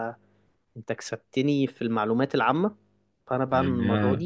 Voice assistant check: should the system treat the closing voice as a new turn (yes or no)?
no